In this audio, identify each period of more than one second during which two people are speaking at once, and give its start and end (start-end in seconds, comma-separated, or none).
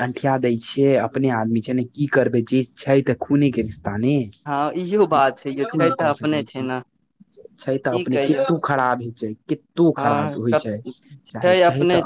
5.1-6.7